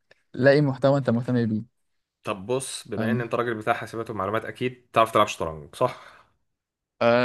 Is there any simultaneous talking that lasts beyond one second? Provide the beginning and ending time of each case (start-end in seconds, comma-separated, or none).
none